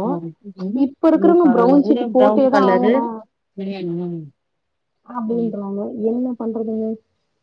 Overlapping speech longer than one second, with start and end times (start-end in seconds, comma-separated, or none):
1.2-2.9